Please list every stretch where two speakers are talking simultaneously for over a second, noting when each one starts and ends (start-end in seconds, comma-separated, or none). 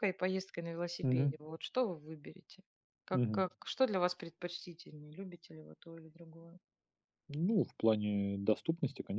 none